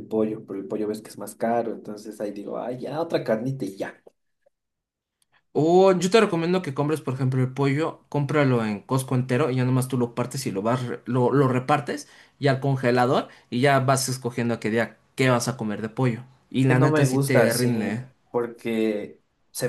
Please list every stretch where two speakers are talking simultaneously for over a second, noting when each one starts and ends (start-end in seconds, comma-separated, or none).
16.7-17.9